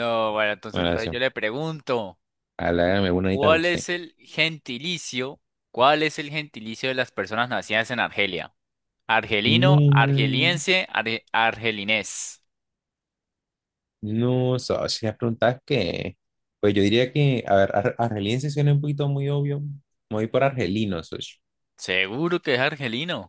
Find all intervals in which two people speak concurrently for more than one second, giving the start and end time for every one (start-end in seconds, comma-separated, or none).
9.4-10.6